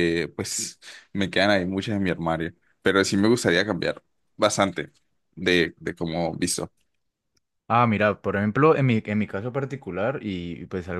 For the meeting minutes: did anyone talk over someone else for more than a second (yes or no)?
no